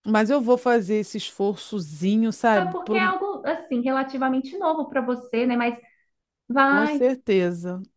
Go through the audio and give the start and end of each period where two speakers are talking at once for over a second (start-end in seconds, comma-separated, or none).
none